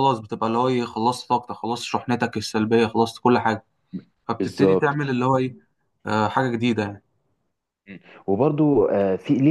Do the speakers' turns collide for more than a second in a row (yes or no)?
no